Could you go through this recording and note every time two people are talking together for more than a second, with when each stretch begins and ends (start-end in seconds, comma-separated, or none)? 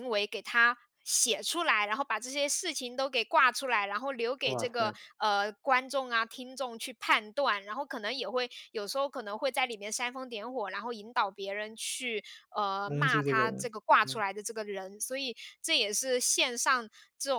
12.9-14.2